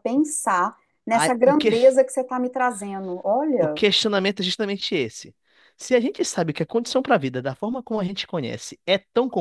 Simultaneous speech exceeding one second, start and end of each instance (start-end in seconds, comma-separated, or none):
none